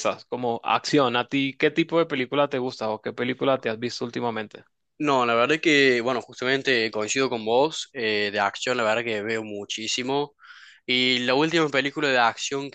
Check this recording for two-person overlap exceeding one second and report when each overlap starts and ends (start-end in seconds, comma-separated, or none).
none